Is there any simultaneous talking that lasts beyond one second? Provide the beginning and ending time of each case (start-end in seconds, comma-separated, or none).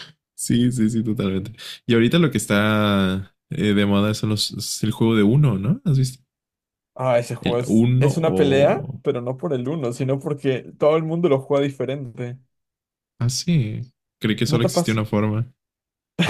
7.4-9.0